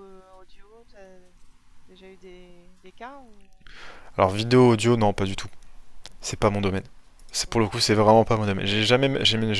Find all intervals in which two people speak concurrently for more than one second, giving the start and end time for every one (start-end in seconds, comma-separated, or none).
none